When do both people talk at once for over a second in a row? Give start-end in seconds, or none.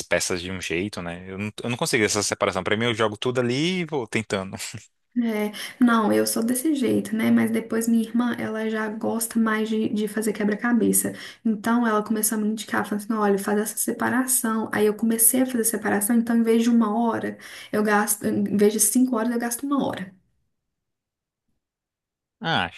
none